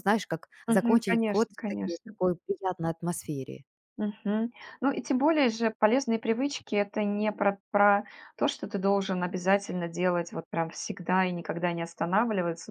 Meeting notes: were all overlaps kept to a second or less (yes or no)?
no